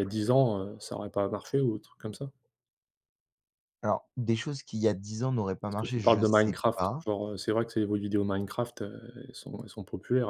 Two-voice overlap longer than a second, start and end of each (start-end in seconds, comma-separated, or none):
5.7-7.0